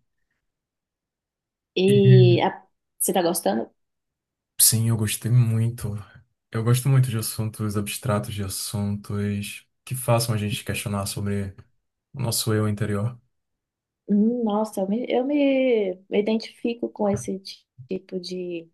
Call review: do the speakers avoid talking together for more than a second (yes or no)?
yes